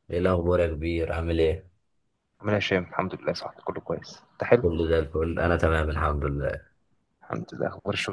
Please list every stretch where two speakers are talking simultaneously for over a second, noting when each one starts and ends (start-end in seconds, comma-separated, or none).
none